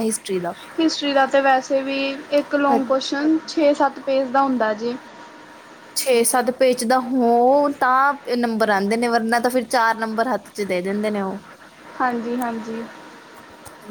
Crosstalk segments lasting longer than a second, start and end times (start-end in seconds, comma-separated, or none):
none